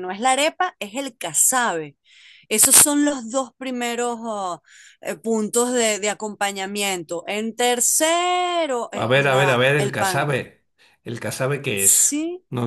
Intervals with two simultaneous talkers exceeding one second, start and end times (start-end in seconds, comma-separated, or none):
9.0-10.3